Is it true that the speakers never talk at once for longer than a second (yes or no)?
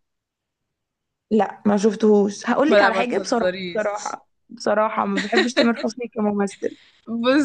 no